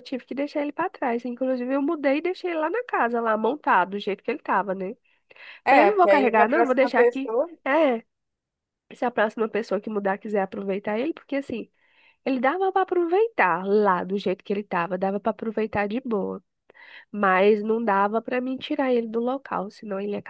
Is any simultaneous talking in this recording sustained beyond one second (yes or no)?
yes